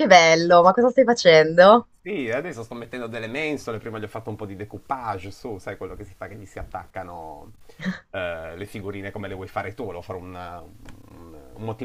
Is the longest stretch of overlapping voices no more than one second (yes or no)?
yes